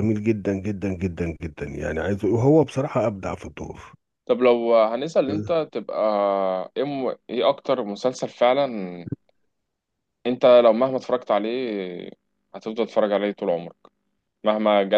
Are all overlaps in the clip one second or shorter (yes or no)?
yes